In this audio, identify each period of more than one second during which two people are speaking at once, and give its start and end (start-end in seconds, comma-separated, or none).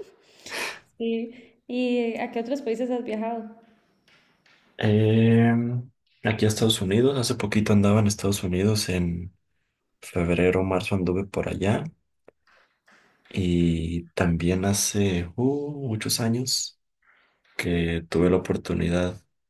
none